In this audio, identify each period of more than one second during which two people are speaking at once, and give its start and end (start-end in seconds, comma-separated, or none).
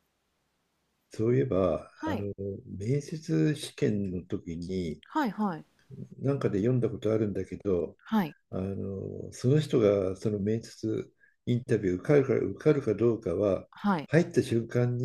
none